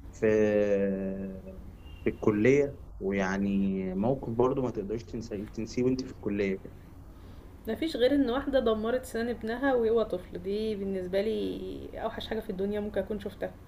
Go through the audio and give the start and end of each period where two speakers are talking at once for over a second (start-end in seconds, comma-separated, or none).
none